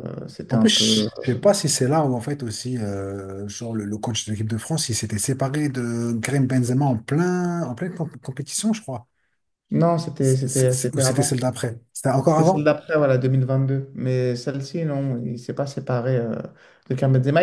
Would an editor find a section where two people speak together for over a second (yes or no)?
yes